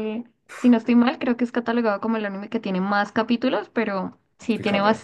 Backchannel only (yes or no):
yes